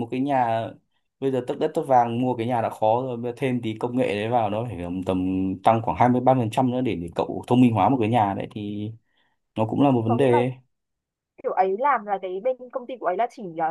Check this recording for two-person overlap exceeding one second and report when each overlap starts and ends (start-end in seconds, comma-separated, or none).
none